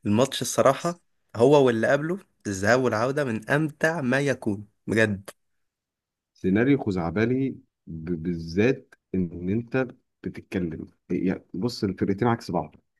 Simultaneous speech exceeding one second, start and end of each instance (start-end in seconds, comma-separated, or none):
none